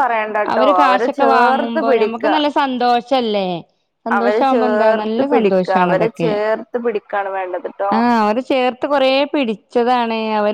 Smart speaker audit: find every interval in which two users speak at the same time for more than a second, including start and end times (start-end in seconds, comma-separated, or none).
0.5-2.2, 4.2-6.3